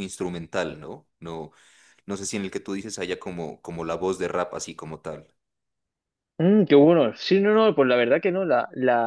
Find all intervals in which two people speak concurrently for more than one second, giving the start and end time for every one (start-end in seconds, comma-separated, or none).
none